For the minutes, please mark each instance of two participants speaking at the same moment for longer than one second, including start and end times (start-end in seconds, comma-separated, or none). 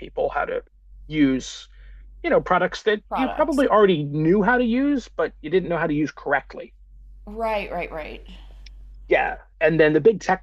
none